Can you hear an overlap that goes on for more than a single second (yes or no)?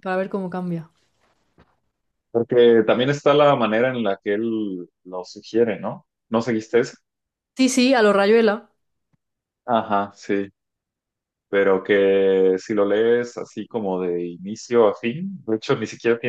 no